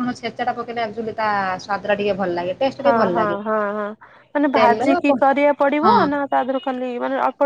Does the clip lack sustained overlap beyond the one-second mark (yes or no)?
yes